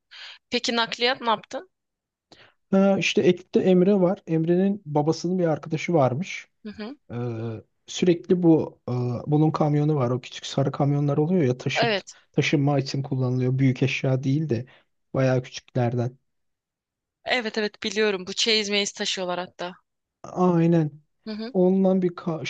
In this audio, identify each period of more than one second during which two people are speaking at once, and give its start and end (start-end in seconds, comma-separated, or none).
none